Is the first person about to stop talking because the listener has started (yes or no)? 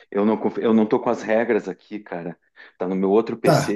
yes